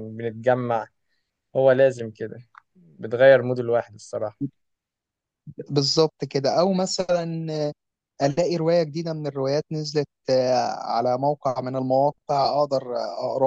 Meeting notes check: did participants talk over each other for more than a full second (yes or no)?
no